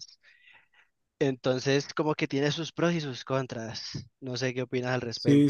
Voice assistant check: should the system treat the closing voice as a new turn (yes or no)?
yes